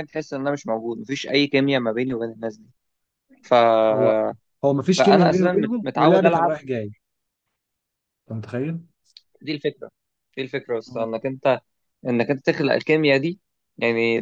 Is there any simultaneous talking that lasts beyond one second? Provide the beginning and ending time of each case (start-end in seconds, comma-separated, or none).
4.9-6.6